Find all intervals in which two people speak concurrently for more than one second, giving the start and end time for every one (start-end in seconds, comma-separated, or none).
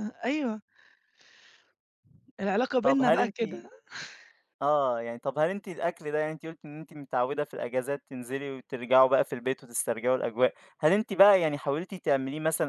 none